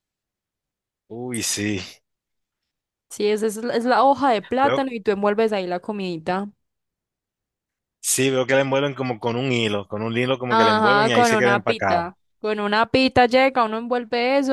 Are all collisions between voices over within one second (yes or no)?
no